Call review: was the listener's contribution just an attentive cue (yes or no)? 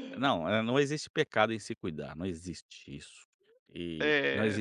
yes